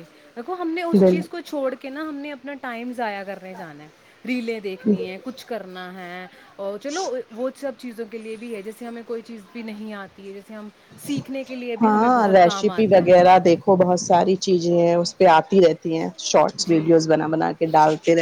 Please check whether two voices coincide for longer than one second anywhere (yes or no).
yes